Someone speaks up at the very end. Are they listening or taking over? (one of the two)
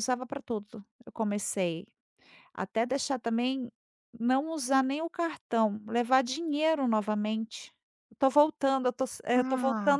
taking over